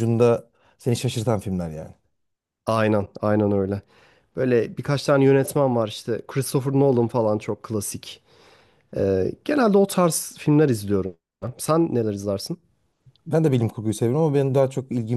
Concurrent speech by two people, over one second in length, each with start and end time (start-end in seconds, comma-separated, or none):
none